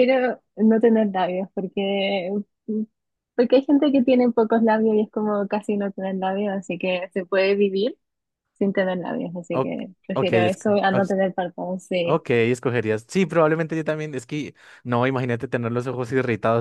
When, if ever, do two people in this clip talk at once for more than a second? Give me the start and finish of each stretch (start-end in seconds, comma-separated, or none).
9.5-11.2